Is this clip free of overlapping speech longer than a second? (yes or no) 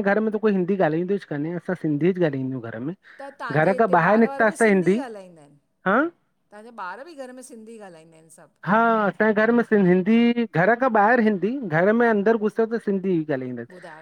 no